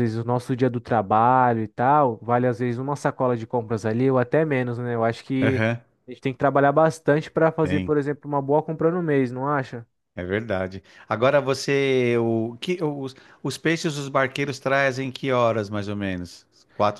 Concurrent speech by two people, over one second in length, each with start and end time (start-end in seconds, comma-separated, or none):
none